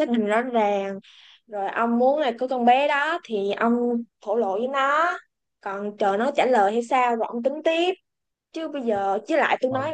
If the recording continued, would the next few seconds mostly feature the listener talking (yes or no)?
no